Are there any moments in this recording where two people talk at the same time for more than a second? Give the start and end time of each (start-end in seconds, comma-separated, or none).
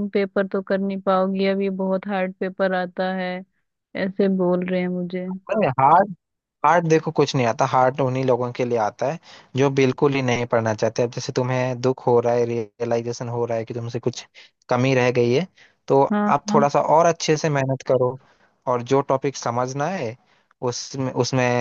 none